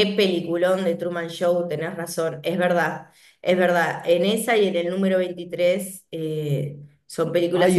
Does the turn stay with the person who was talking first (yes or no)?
no